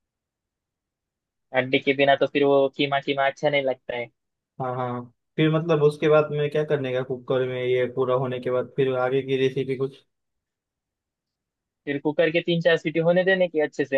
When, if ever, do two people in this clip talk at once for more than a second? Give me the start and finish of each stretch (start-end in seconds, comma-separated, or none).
none